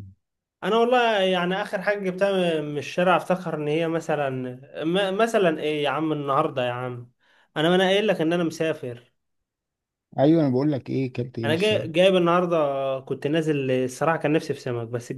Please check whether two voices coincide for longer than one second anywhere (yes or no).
no